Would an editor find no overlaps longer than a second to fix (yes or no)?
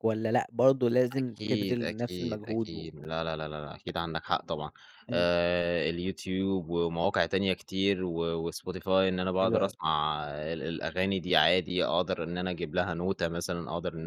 no